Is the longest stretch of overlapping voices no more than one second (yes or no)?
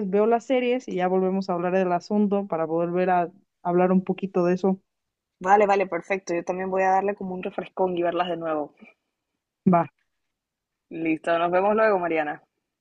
yes